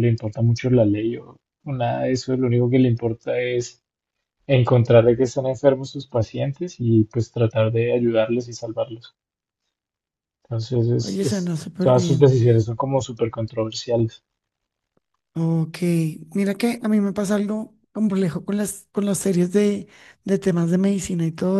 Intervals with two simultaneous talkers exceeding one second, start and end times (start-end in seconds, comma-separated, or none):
11.0-12.5